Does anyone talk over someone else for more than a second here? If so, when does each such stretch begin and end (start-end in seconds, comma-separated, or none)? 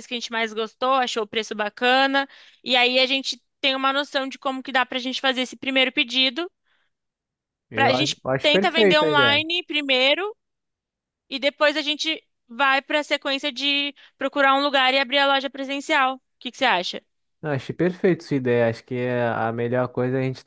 7.7-9.4